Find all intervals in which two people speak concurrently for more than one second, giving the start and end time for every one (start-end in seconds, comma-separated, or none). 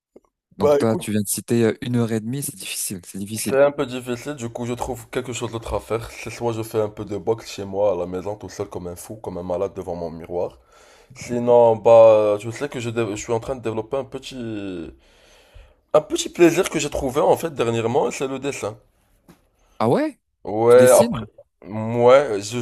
none